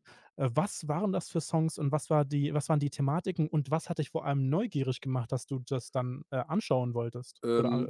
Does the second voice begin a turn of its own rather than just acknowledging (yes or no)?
yes